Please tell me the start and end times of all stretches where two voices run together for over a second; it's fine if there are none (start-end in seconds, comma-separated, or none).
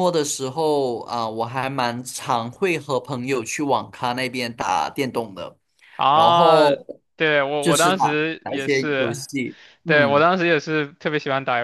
7.6-9.2